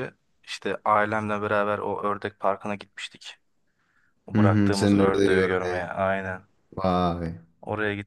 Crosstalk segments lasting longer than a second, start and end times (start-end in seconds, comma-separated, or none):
4.3-5.9